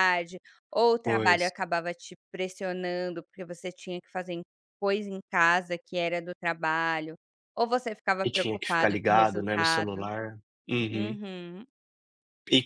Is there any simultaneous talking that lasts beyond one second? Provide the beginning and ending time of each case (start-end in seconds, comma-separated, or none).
8.2-10.1